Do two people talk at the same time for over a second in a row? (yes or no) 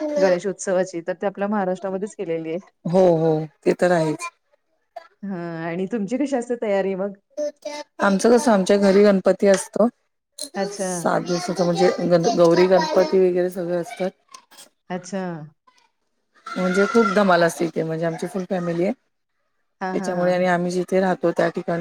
no